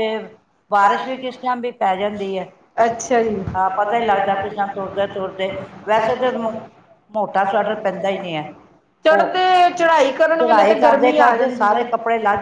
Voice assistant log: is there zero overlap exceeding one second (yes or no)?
no